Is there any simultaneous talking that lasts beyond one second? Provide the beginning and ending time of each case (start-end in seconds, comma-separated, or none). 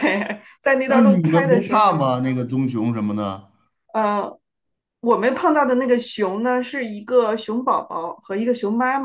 0.8-2.1